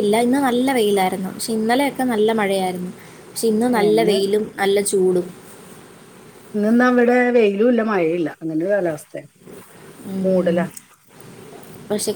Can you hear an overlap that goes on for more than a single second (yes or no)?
no